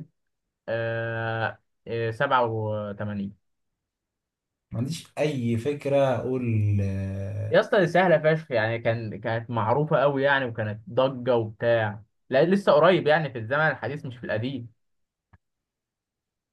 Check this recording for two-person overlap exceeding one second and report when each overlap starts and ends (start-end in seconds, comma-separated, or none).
none